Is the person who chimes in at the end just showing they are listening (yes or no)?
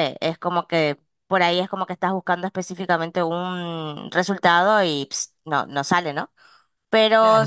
no